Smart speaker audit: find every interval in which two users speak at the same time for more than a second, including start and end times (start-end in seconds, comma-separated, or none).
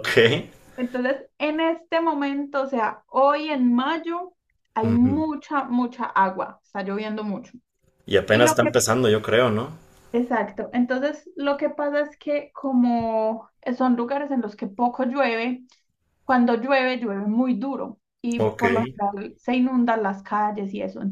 none